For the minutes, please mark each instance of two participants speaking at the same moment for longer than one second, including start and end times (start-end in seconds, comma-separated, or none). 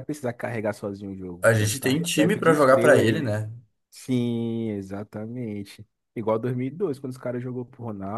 1.4-3.3